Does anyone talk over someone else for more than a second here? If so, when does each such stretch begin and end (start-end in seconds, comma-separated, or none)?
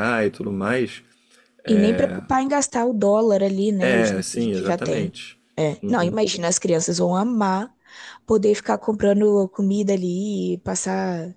3.8-5.1